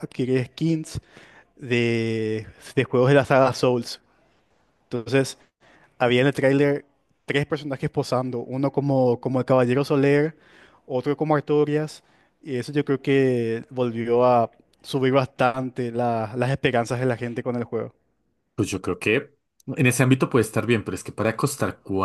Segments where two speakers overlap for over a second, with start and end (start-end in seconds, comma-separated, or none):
none